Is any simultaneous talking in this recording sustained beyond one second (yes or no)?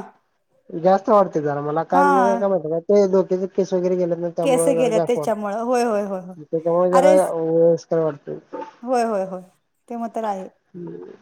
yes